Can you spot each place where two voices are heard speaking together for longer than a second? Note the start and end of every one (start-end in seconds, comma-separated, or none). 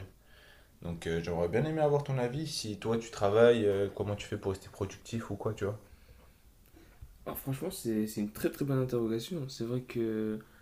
none